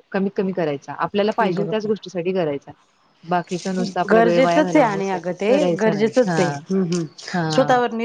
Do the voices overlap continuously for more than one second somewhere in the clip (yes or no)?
yes